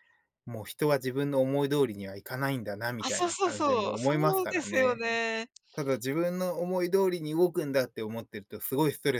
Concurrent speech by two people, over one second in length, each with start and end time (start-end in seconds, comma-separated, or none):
3.0-5.0